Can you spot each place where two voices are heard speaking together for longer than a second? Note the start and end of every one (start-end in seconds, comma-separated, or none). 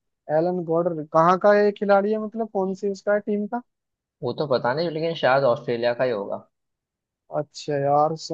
none